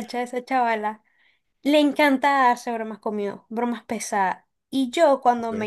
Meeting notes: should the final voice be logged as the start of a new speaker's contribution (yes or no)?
no